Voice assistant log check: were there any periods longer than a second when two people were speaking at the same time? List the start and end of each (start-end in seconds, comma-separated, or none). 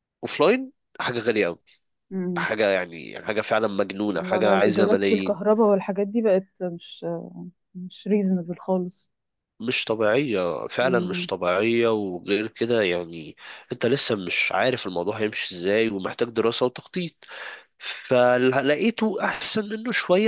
4.1-5.4